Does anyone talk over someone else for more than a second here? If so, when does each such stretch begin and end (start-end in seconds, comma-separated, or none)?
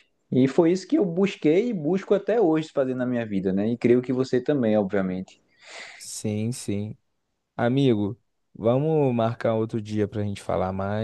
none